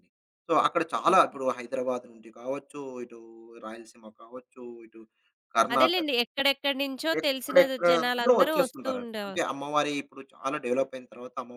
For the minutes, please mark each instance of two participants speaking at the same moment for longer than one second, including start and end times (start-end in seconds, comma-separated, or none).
7.2-9.4